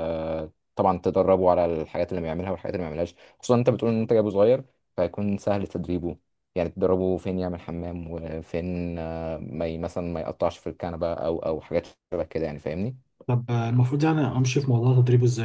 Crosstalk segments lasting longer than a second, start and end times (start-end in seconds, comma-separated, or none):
none